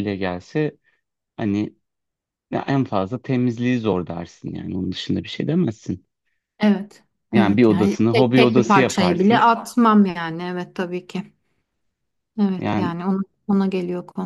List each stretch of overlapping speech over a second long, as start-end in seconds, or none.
7.3-9.5